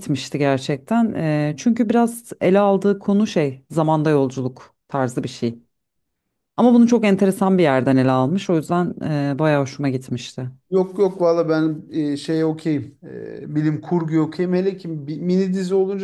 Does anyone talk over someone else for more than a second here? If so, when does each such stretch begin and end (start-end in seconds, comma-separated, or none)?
none